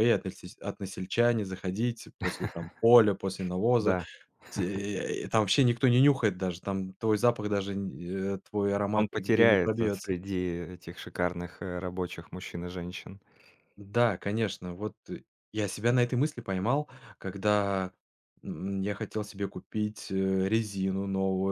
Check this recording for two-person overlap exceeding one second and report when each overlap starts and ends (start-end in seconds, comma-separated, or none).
8.9-10.2